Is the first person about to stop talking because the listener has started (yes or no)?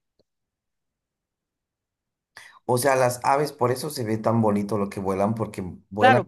yes